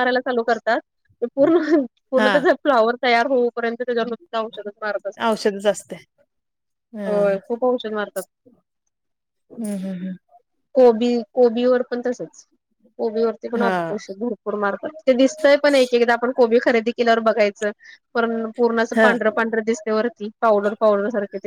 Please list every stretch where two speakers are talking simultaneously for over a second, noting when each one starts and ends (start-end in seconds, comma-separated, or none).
none